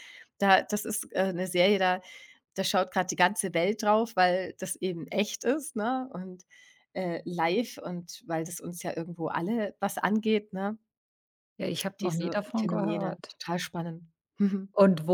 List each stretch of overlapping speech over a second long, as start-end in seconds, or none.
12.0-13.4